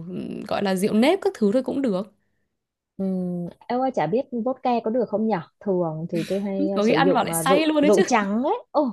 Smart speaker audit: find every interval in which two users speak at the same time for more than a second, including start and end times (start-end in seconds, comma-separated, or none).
6.6-8.0